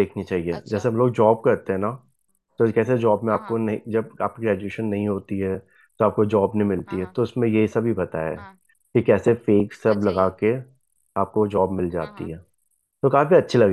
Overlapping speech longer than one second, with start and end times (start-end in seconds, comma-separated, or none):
none